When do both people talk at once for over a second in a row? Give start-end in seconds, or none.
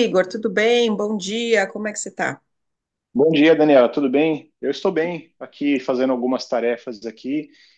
none